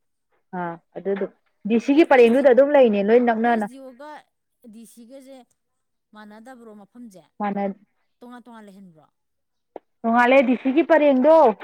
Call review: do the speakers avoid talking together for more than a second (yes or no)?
yes